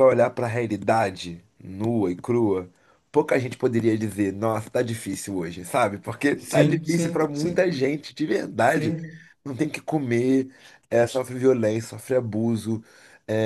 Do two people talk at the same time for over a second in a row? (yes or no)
yes